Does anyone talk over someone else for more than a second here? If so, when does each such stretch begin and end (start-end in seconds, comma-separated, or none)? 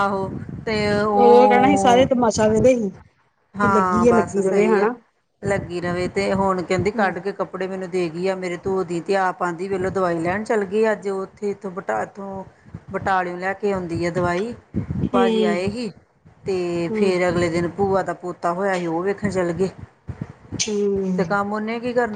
3.6-4.9